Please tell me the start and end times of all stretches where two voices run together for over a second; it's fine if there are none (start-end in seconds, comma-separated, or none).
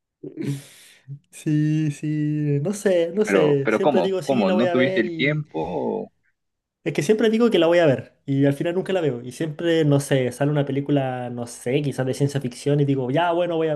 3.2-5.5